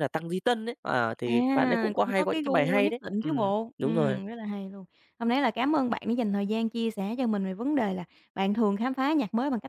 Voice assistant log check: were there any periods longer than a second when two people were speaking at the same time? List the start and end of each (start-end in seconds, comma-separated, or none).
1.2-4.2